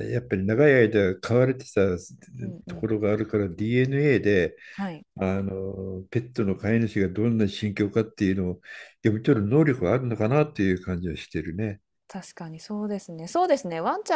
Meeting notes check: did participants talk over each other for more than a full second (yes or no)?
no